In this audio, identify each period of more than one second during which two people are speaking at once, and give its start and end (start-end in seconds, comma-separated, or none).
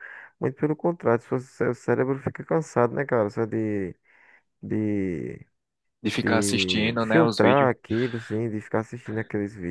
6.2-7.7